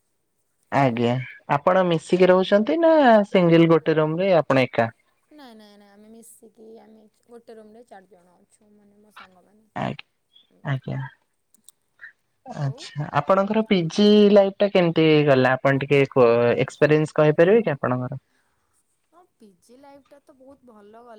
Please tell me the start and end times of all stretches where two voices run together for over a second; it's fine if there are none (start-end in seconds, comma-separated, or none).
none